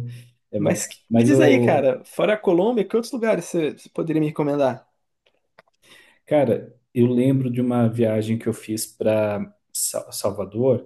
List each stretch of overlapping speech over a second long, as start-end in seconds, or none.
0.6-1.9